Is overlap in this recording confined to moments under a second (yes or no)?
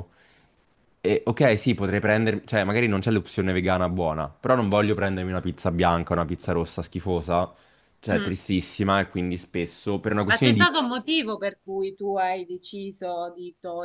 yes